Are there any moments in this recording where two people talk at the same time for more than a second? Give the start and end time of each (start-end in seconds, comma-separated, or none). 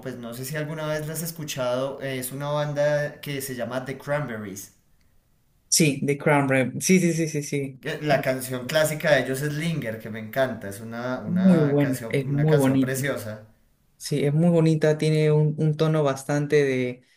11.2-13.2